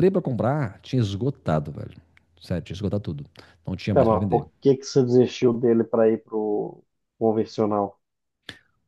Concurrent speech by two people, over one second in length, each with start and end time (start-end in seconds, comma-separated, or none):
none